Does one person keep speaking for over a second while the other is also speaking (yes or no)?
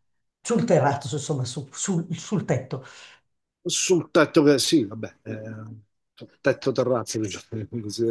no